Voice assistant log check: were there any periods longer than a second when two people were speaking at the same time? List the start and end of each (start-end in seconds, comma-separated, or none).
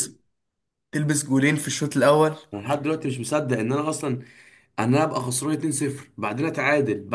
none